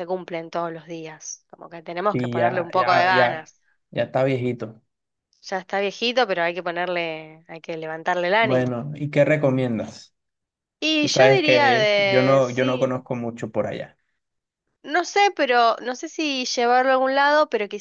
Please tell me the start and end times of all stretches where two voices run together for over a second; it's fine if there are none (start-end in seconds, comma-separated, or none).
2.1-3.5, 11.0-13.0